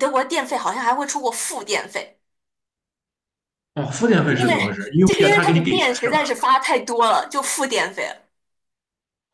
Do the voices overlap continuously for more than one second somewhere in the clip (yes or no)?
yes